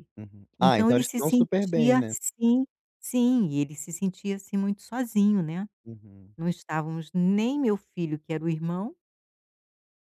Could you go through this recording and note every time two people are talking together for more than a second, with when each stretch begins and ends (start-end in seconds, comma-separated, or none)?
0.6-2.1